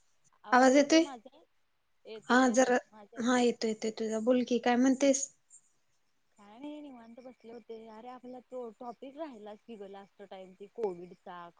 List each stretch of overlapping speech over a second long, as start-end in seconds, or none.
none